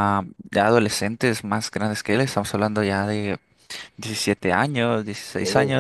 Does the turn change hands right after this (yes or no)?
no